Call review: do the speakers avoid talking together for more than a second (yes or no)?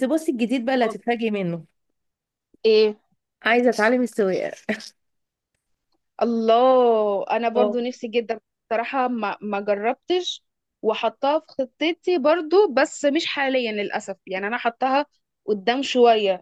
yes